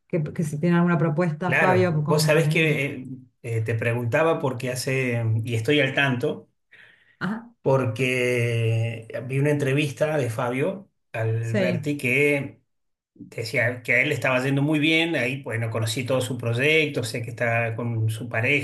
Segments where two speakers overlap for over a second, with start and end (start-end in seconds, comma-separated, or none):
1.4-2.8